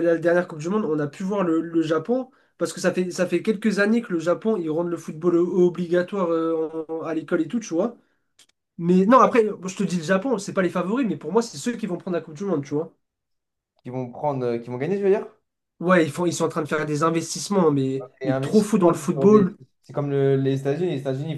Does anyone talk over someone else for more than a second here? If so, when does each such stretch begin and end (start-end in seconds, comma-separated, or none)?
18.2-19.6